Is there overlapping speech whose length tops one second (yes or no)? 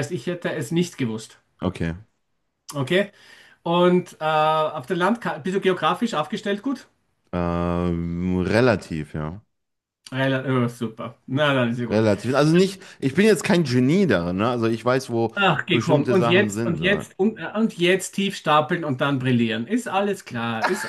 yes